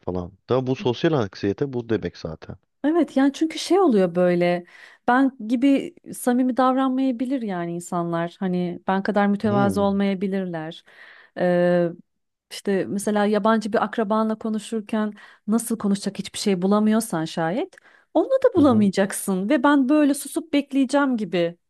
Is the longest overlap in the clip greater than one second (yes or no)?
no